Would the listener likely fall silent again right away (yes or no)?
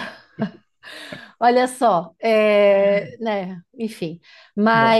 yes